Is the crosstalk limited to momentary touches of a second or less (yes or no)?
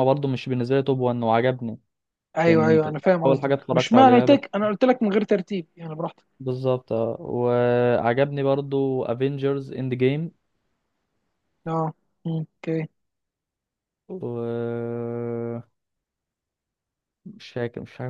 no